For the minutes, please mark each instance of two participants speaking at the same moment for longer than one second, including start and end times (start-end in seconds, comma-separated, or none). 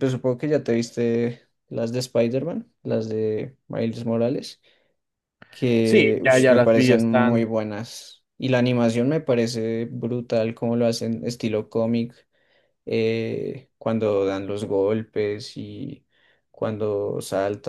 5.8-7.5